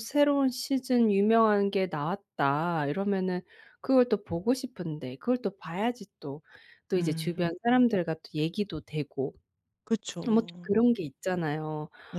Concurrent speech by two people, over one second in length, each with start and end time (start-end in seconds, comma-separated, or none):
none